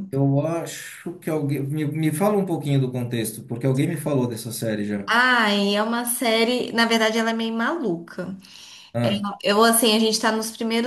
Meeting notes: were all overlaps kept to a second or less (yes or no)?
yes